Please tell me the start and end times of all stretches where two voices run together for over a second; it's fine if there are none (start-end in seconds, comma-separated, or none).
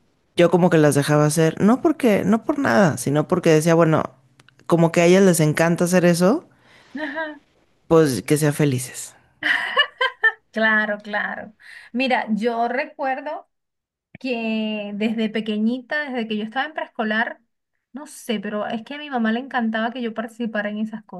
none